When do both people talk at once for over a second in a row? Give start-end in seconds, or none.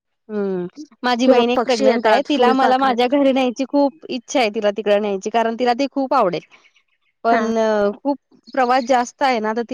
1.2-3.1